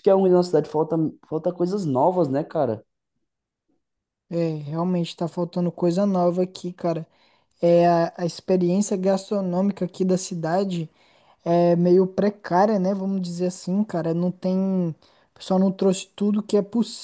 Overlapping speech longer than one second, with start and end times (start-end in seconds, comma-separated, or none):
none